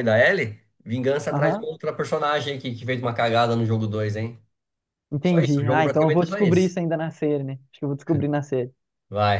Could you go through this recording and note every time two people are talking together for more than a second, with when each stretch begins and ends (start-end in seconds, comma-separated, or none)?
5.2-6.7